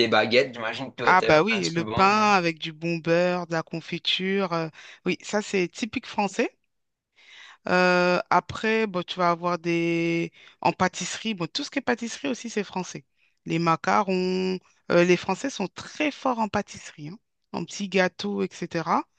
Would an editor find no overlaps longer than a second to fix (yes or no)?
no